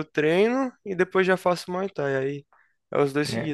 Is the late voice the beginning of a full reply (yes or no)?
yes